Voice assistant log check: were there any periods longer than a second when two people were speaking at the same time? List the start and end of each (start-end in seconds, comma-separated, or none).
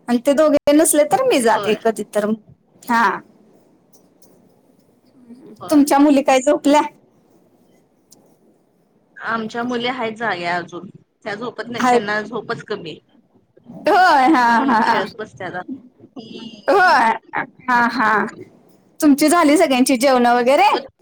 none